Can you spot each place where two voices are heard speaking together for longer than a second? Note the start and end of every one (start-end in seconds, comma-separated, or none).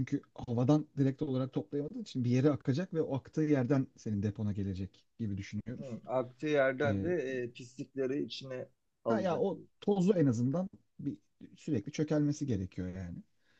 none